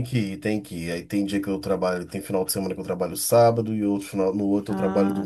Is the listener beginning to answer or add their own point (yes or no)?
yes